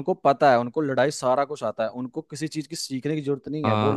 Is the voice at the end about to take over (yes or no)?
yes